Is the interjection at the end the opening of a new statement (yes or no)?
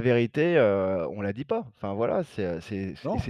no